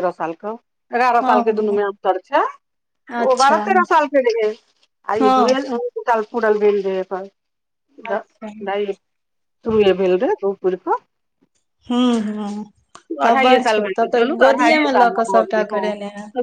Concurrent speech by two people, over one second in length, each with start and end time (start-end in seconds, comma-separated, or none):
13.2-15.9